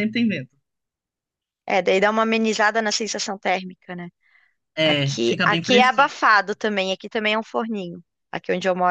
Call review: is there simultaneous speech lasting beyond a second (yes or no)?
yes